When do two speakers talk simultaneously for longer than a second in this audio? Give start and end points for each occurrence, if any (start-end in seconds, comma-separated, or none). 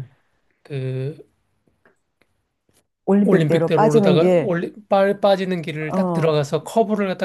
3.2-4.5